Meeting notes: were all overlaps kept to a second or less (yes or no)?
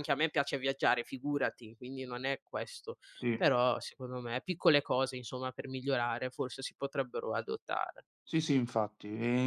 yes